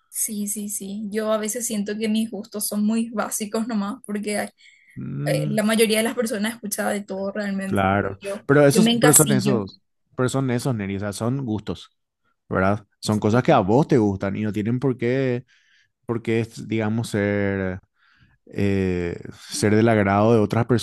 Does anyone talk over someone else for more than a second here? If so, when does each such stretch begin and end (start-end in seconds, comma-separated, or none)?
7.6-9.6